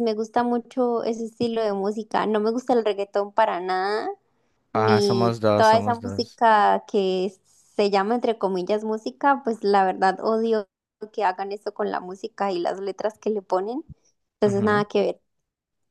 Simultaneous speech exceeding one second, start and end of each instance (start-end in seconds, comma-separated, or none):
4.7-6.4